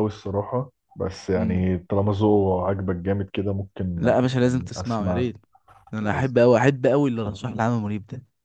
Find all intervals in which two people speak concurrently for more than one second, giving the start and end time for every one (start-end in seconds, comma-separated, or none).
4.0-5.3